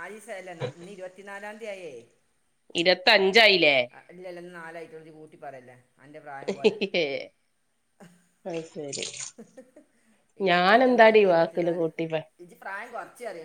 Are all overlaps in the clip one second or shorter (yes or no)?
no